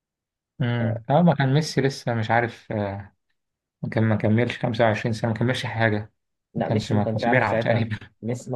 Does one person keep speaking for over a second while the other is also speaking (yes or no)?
yes